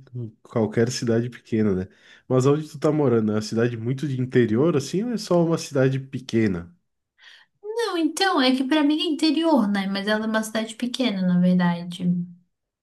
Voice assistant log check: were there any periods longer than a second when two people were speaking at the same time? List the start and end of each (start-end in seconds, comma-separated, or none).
none